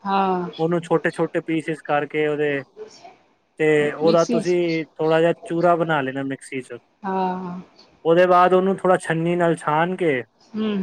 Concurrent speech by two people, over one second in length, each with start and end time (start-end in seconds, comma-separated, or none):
none